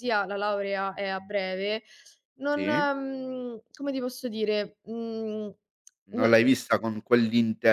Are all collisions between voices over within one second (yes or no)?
yes